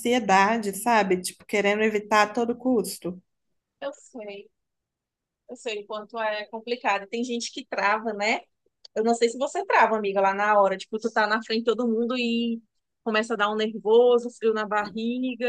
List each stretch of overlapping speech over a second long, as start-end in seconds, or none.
none